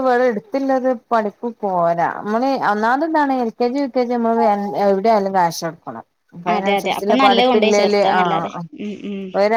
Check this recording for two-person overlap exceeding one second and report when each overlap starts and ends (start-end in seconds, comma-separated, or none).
6.5-8.6